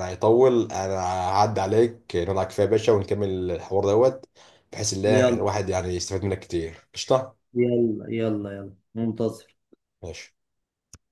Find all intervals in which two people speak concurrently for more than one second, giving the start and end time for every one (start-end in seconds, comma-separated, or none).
none